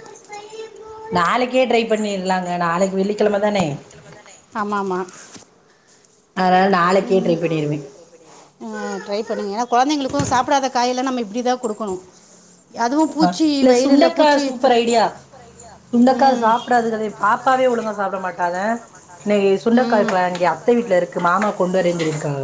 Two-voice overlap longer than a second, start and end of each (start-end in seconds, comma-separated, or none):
none